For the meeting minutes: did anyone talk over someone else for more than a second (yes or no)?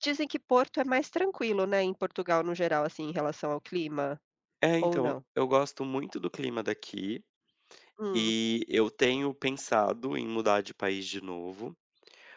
no